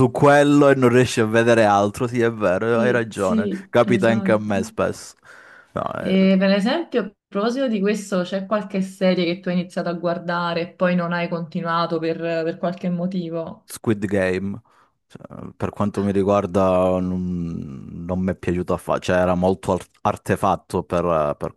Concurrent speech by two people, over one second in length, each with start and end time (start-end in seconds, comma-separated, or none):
2.7-4.6